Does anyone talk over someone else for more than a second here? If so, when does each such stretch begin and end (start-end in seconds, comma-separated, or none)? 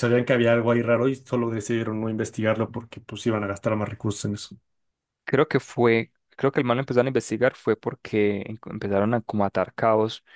none